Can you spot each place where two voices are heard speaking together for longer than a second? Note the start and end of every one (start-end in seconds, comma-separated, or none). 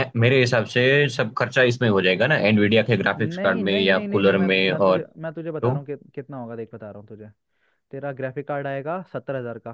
3.2-5.0